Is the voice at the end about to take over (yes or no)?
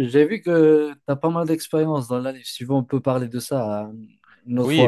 yes